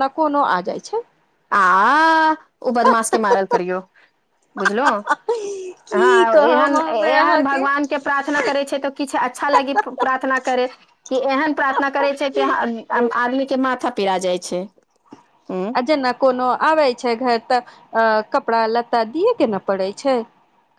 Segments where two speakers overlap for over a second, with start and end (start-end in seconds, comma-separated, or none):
5.9-7.6